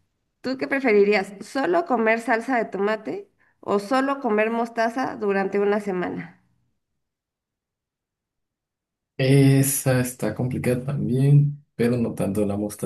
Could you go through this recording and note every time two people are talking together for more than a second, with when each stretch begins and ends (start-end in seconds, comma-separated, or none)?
none